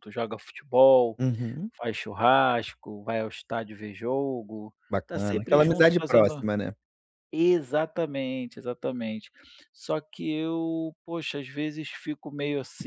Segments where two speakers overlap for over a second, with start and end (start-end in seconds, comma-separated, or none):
4.9-6.4